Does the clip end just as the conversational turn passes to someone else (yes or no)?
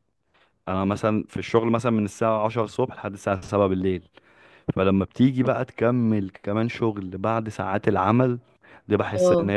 no